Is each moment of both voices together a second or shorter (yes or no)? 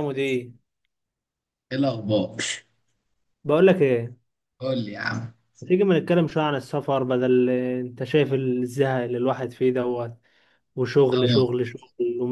yes